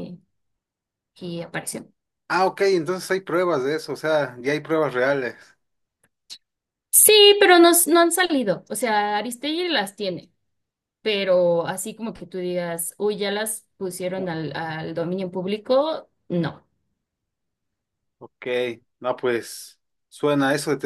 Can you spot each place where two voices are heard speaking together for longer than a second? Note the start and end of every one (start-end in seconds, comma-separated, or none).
none